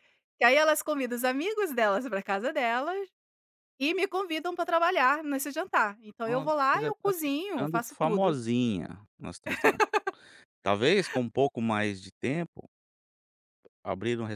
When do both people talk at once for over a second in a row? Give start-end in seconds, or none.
6.2-8.4